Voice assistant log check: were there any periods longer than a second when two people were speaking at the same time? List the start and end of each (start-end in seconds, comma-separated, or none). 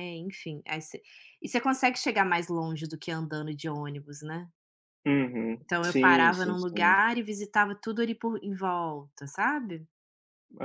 5.6-7.0